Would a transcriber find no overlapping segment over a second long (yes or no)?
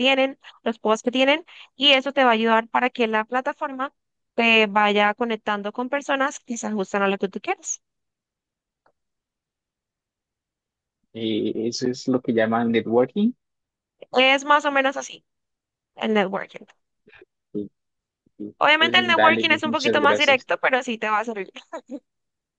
no